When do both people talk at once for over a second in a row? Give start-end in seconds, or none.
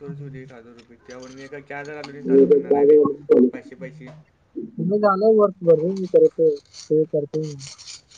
none